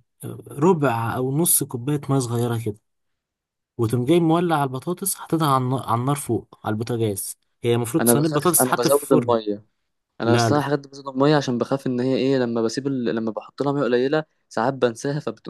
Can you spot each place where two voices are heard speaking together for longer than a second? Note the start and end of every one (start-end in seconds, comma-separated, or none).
8.0-9.4